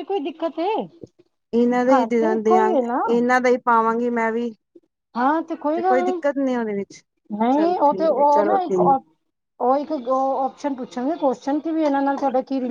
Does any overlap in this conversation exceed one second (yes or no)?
yes